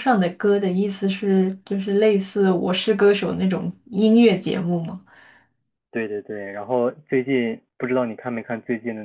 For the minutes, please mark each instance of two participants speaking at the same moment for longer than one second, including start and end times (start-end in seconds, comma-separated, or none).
none